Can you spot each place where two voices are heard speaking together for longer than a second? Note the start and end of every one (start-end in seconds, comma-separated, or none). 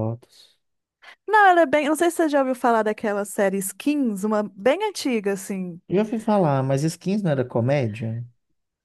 none